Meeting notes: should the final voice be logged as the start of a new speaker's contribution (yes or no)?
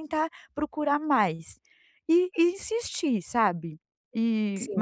no